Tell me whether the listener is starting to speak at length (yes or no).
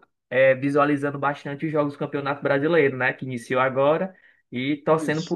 no